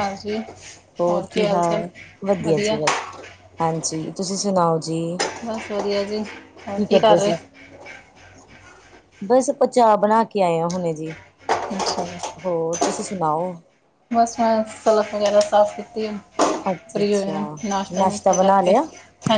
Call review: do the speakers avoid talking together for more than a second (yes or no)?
yes